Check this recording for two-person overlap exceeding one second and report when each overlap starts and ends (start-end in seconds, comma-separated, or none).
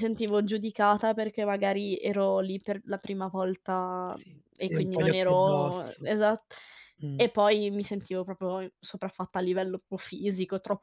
4.2-6.1